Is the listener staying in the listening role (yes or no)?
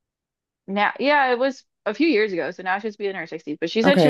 no